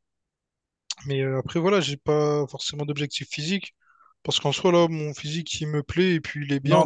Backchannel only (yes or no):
no